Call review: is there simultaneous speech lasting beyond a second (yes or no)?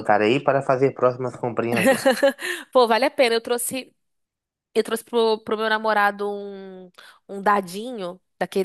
no